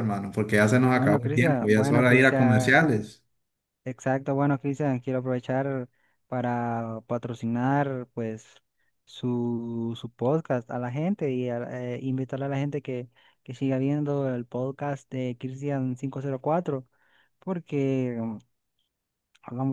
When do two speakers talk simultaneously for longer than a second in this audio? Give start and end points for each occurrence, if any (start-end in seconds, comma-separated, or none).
0.9-2.8